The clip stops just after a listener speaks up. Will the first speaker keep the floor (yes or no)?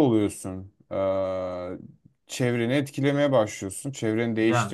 yes